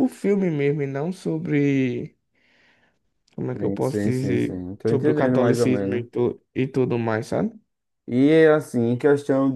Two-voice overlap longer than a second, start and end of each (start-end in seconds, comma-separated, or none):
3.6-6.1